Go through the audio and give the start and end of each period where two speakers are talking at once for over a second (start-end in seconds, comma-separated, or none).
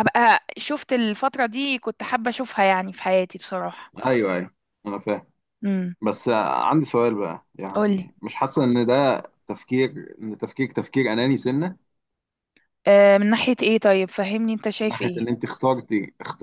none